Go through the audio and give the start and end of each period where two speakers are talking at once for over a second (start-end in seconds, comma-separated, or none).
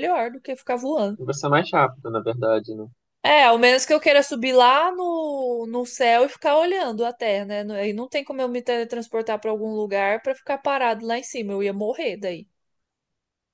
none